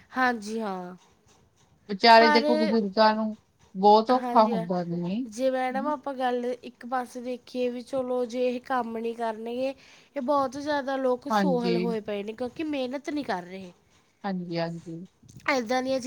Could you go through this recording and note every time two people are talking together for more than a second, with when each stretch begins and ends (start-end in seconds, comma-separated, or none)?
none